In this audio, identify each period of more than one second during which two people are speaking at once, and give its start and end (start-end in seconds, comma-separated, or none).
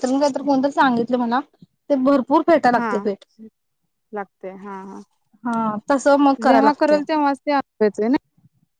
none